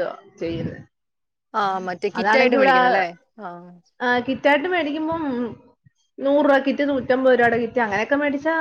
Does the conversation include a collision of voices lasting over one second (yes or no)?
no